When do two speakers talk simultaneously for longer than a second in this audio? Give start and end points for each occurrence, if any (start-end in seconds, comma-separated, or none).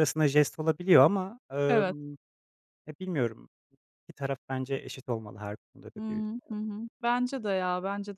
none